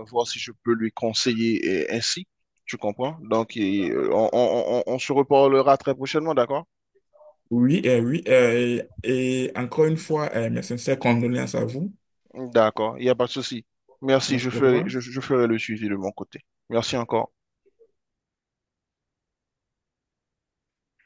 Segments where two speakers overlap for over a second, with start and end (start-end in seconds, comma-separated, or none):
none